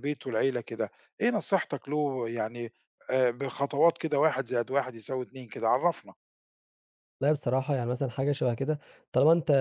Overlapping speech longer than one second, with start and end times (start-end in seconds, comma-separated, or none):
none